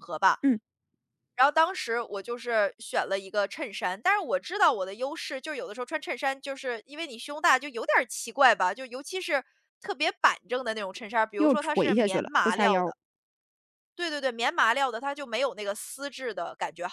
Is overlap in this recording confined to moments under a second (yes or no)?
no